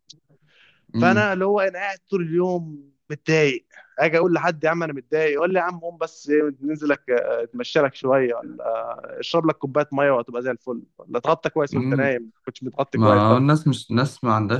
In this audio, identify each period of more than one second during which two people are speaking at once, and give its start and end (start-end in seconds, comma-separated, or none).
none